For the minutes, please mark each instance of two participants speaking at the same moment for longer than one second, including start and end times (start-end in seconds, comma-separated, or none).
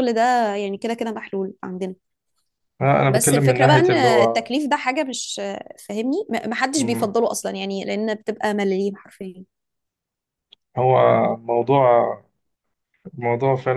3.1-4.5